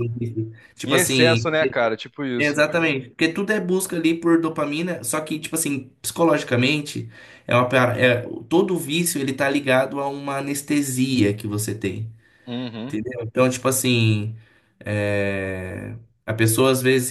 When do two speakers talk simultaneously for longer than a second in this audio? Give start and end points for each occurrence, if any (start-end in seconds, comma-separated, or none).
none